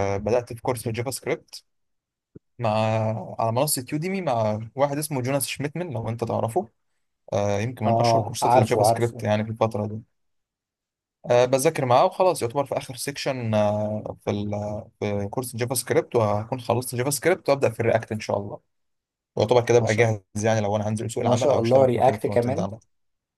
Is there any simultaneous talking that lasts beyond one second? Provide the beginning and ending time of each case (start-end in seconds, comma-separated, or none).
7.9-9.3, 21.2-22.7